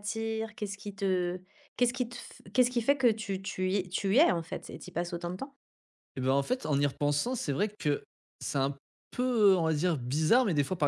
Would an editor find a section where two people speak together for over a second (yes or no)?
no